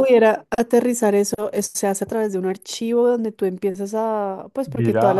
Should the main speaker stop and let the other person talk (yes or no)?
yes